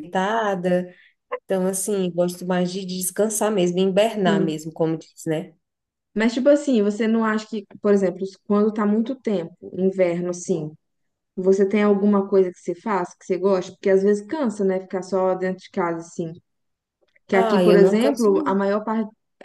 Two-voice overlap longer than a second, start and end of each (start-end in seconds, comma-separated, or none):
17.3-18.6